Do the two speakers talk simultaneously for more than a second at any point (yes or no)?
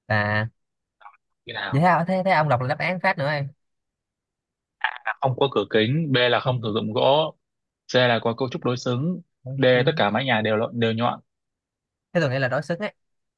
no